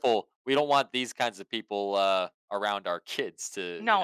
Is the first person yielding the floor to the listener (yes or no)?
yes